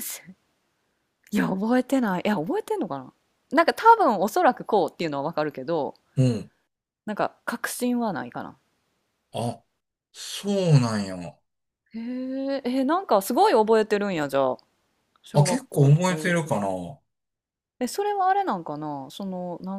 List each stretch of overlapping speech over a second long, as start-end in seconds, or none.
15.3-16.7